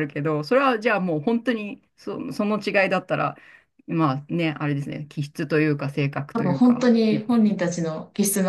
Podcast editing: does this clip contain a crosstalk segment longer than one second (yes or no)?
no